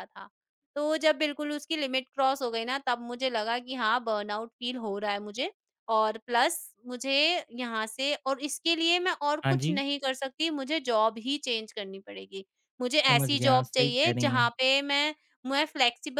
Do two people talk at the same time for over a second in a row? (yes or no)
yes